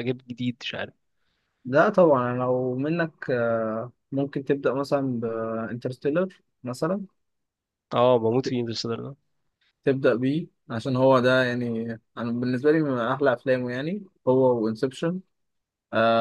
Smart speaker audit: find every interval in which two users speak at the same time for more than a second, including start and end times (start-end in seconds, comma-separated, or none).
none